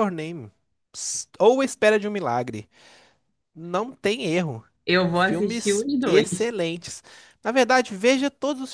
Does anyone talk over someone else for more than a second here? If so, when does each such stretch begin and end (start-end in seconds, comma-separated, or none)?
5.1-6.5